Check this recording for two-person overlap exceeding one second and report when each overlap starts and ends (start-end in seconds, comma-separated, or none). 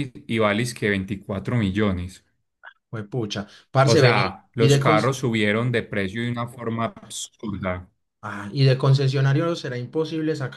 3.9-5.1